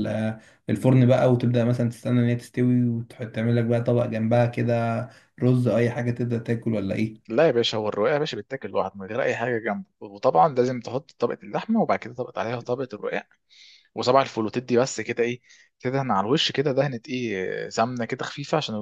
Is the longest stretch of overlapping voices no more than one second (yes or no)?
yes